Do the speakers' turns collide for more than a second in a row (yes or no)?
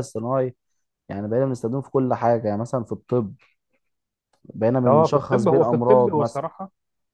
yes